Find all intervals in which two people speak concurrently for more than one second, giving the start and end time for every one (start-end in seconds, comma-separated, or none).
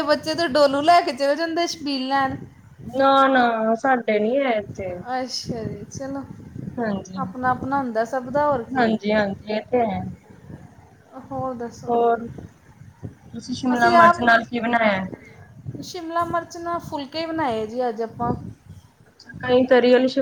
none